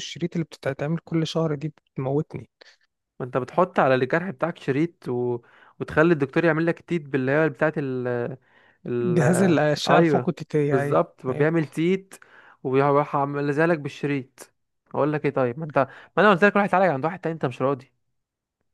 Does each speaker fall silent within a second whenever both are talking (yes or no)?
no